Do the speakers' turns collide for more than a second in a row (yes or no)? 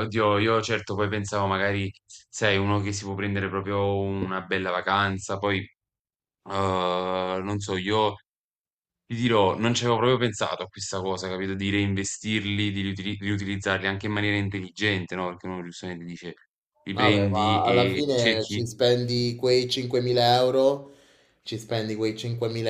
yes